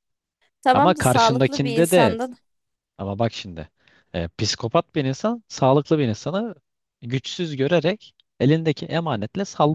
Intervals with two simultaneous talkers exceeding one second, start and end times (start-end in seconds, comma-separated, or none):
0.7-2.2